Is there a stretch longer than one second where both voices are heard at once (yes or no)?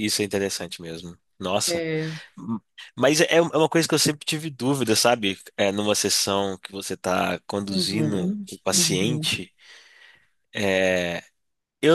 yes